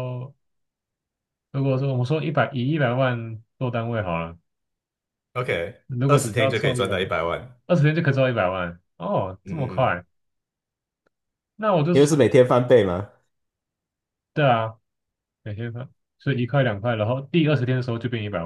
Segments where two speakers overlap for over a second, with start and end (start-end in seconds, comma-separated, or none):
5.9-7.2